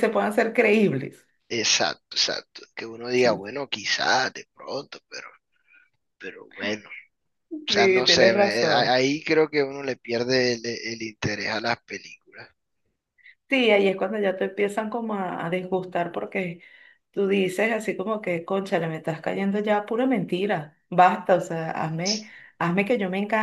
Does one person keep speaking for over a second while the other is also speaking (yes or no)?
yes